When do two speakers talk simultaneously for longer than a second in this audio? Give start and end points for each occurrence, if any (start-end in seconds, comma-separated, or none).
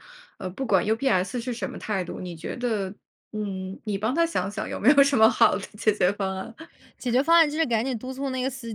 none